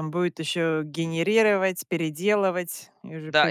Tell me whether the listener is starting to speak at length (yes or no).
yes